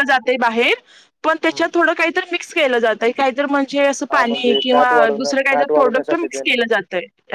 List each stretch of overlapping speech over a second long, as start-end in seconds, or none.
4.1-6.5